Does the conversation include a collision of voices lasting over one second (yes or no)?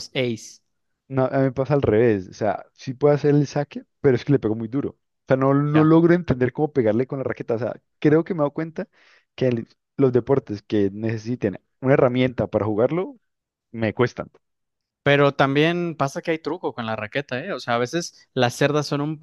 no